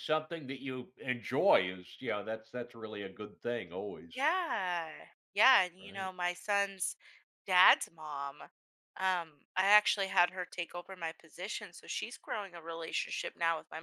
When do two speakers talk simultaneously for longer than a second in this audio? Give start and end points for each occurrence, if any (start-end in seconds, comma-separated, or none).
none